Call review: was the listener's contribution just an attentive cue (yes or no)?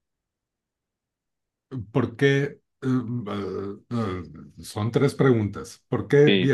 yes